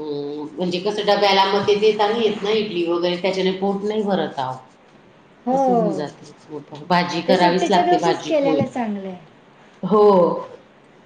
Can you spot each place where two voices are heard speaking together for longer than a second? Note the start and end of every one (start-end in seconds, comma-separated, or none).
7.3-8.6